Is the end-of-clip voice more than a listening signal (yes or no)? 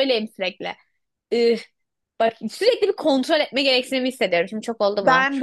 no